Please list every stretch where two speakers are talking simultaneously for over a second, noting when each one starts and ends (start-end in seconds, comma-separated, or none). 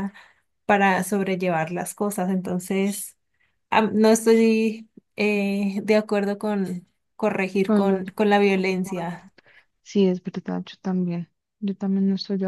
7.7-9.3